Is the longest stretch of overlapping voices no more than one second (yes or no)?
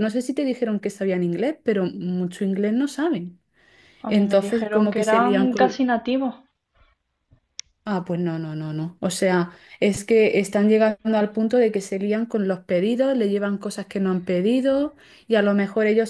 no